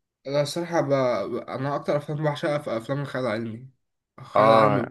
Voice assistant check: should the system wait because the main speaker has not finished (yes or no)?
yes